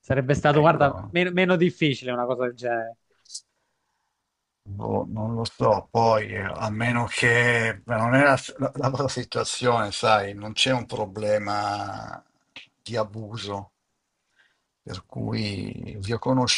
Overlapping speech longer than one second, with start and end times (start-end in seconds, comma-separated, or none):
none